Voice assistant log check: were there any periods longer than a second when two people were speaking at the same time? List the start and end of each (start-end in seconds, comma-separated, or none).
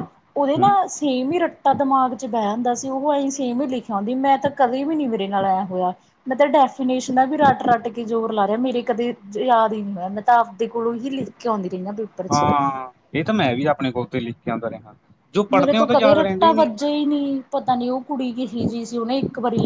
15.5-16.9